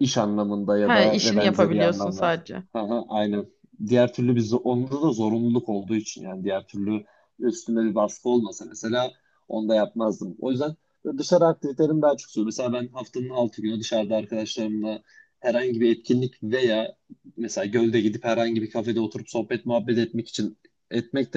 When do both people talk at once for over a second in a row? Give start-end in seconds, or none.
0.8-2.3